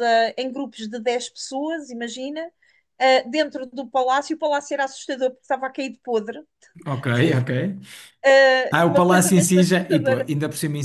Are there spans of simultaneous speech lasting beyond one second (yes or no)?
yes